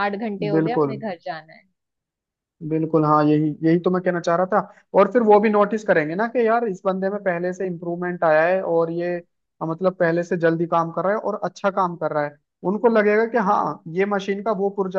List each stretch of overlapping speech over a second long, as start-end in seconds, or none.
none